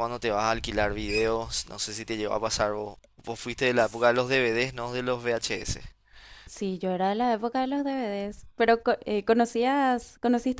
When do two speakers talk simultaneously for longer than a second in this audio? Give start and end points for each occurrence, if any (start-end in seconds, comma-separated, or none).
none